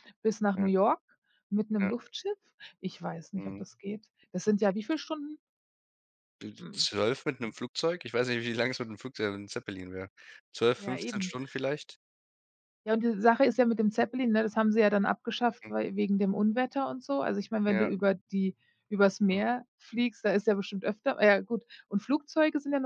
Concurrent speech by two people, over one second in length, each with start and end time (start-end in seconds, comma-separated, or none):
none